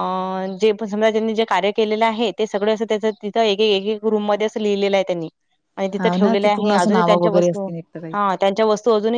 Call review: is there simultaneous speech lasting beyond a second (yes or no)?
yes